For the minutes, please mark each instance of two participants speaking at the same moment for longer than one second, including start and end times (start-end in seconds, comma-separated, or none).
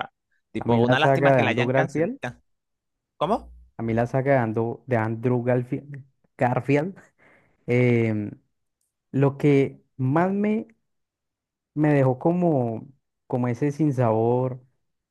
0.6-2.2